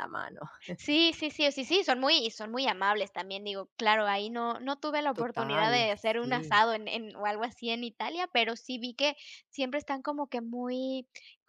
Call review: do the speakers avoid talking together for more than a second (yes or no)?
no